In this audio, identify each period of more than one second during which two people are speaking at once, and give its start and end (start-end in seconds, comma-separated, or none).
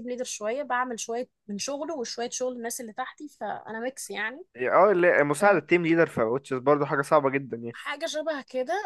none